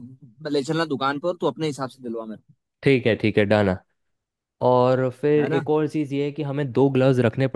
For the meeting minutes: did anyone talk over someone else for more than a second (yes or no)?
no